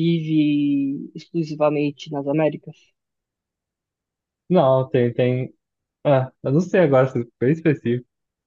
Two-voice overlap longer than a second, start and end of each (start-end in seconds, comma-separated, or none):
none